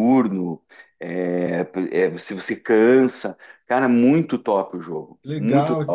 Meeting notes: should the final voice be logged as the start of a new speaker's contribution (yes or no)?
yes